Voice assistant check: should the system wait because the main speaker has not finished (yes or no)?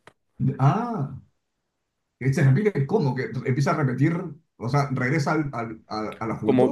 no